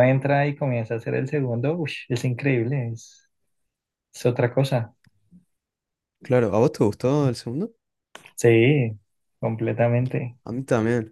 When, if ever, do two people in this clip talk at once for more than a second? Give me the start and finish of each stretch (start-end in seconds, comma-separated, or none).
none